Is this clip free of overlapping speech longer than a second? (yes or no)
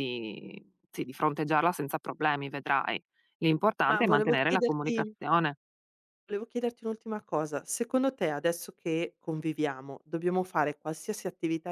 no